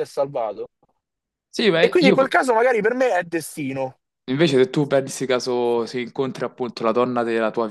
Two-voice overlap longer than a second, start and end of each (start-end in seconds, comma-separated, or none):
none